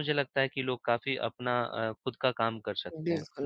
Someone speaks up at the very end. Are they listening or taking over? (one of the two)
taking over